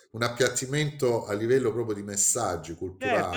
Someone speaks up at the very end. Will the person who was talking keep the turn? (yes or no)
no